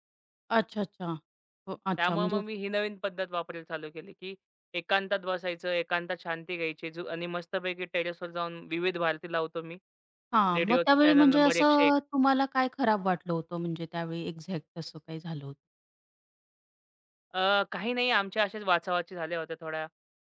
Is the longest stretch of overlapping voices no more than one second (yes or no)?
no